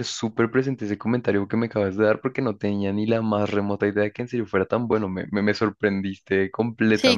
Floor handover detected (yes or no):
yes